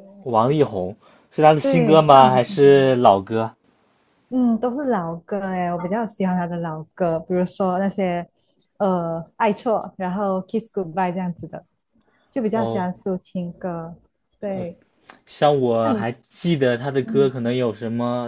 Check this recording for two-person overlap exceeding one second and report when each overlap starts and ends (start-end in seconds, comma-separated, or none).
1.6-2.9